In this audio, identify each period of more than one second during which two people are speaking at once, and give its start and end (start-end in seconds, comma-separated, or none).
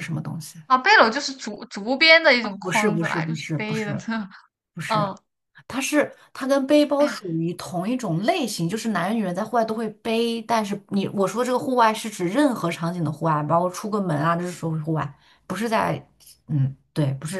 2.6-4.0